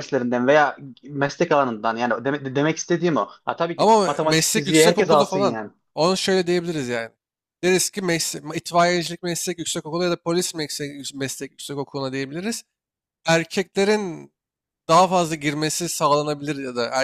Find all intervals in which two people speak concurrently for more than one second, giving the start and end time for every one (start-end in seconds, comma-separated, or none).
3.8-5.6